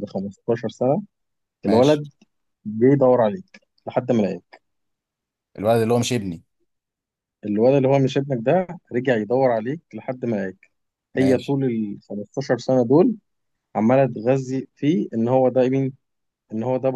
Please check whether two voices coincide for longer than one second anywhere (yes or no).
no